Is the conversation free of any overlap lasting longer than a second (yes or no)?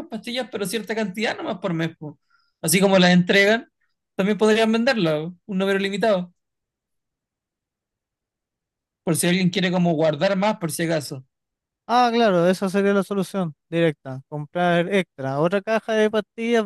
yes